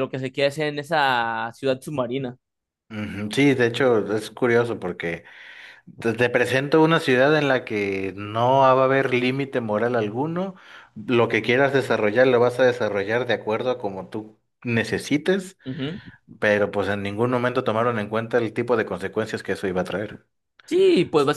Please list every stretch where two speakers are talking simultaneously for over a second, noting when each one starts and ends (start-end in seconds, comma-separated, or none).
none